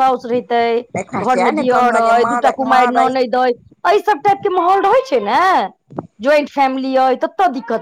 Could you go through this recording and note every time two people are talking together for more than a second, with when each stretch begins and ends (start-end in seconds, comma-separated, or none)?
1.0-3.1